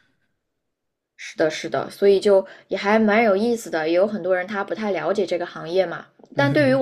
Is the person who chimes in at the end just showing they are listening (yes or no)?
yes